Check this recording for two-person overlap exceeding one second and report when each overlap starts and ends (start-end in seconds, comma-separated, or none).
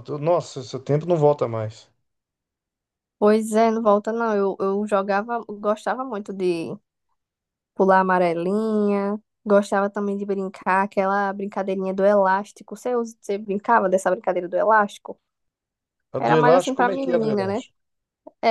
16.2-17.6